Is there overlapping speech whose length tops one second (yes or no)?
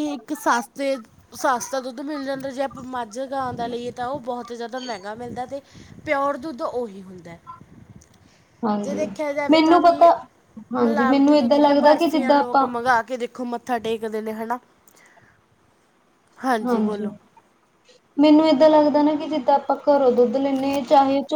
yes